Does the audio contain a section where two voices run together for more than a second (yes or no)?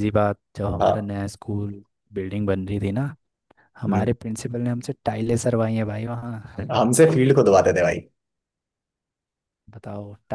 no